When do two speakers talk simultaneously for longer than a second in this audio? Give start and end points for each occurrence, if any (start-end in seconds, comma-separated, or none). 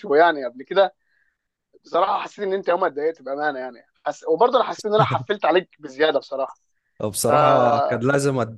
none